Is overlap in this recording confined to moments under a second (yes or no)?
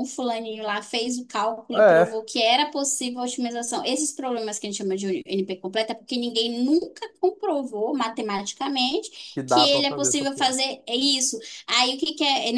no